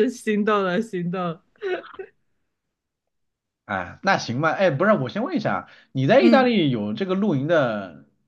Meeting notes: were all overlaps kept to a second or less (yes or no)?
yes